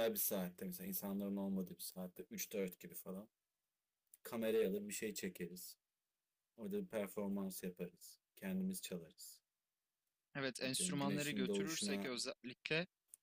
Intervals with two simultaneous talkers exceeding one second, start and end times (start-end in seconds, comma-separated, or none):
10.6-12.1